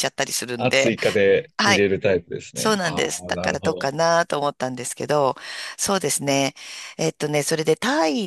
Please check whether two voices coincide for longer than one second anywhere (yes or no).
yes